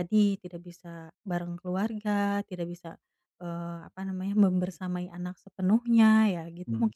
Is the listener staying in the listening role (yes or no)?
no